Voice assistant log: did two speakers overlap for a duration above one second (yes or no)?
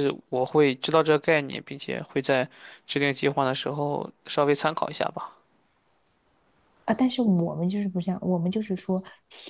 no